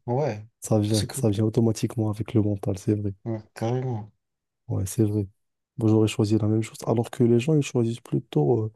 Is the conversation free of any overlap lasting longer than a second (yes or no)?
yes